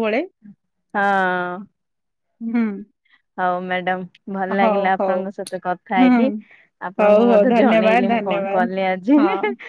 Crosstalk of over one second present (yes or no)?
yes